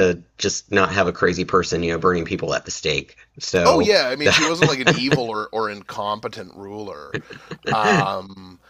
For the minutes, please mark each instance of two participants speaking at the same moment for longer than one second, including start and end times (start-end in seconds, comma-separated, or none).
3.6-5.2